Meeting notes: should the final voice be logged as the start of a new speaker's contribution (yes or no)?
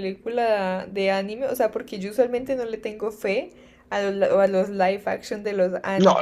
yes